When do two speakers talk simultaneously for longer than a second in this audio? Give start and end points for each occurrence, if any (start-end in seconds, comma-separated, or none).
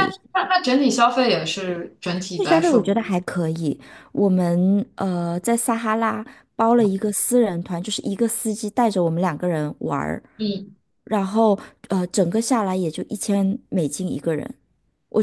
none